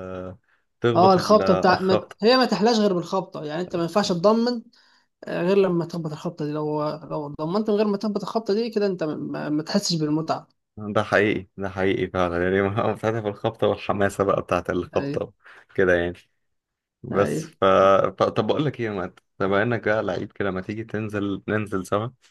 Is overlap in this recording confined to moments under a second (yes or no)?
no